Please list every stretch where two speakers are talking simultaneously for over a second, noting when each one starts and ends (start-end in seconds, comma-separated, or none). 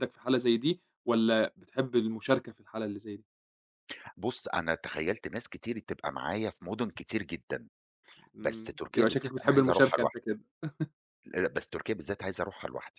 8.4-10.2